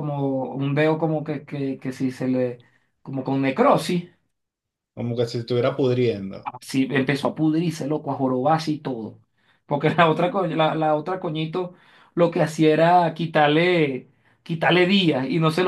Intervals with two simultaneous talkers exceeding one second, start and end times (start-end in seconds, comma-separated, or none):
none